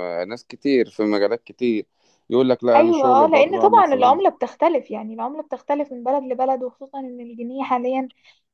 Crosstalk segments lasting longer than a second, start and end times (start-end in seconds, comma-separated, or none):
2.8-4.2